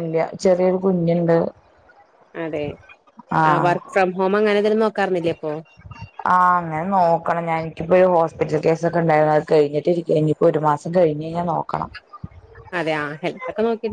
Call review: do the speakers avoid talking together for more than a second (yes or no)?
yes